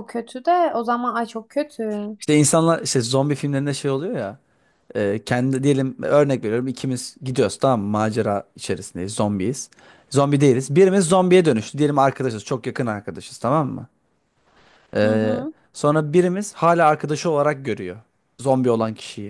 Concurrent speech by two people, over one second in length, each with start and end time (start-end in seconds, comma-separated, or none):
none